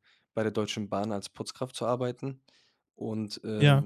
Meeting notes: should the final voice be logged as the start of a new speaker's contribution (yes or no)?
no